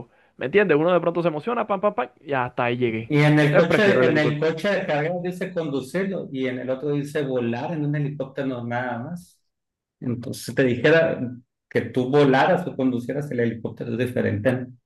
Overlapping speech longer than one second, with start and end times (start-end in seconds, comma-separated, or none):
3.1-4.5